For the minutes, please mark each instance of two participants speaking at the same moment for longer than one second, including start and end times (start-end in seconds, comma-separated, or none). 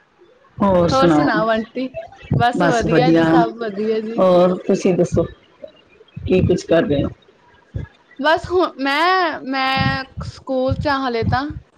none